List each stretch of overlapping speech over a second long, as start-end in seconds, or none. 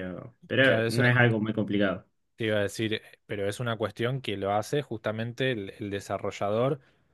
none